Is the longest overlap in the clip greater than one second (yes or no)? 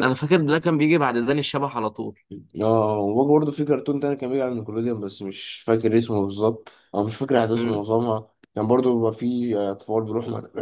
no